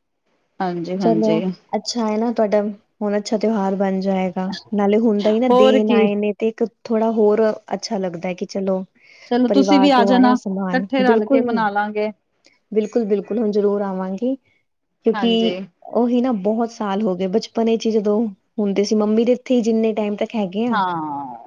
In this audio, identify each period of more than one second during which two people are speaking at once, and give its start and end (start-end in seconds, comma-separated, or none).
9.4-11.4